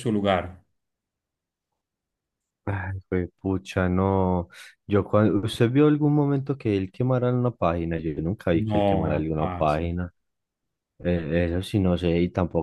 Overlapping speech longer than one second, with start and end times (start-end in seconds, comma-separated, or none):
8.5-9.8